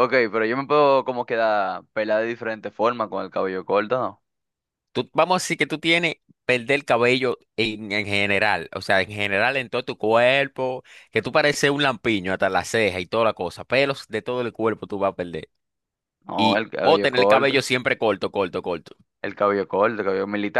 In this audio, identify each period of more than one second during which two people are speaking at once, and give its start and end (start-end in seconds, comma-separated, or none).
16.4-17.6